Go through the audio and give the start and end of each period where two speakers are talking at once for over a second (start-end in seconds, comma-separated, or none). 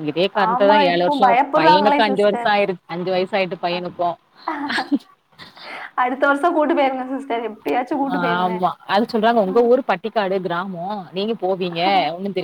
0.5-2.5